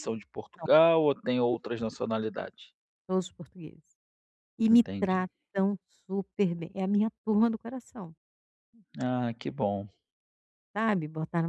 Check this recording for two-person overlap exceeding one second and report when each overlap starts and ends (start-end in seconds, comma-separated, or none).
none